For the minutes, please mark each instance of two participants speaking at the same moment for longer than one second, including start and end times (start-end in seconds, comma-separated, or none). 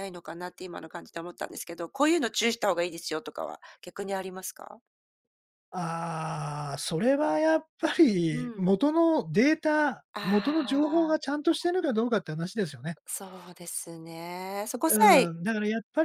10.1-11.4